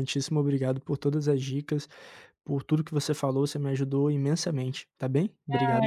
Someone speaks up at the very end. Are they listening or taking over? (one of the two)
taking over